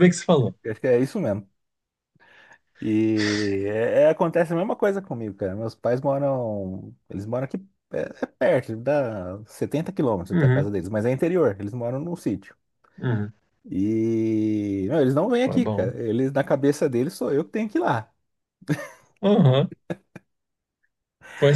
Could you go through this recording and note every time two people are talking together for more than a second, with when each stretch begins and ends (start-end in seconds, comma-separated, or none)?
none